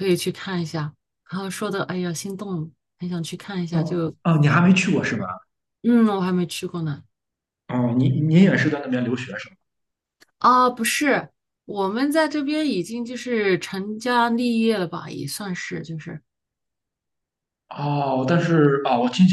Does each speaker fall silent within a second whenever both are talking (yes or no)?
yes